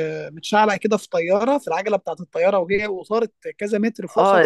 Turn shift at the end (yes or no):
yes